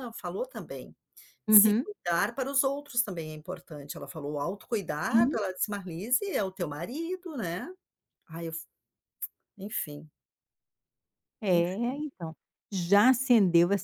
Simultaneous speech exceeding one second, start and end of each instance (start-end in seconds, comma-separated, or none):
none